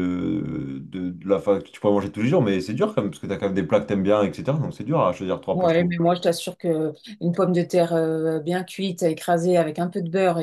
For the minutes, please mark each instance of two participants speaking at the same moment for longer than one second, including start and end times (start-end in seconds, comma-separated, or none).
none